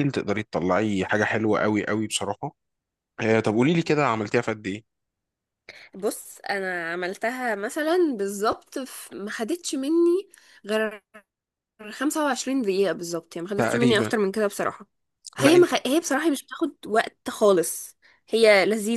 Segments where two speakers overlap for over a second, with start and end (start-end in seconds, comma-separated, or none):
none